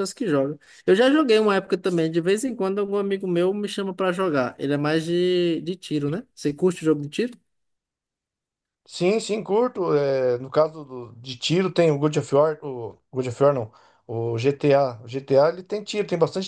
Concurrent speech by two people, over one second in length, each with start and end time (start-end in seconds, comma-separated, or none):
none